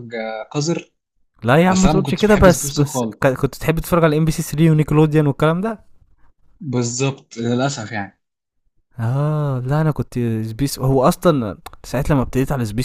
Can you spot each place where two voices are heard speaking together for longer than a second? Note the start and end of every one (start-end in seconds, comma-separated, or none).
1.7-3.4